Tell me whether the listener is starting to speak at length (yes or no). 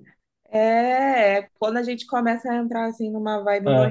no